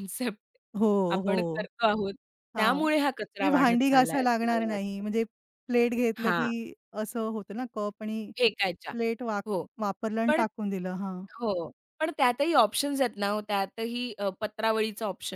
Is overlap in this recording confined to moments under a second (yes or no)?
no